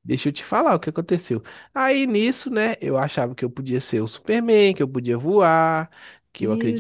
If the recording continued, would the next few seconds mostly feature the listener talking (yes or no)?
no